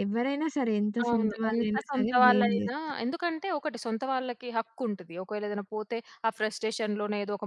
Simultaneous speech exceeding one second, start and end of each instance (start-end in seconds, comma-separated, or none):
1.0-3.0